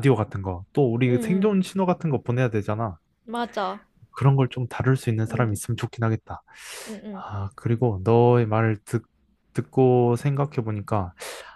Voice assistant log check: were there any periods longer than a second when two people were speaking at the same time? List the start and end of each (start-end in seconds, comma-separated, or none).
none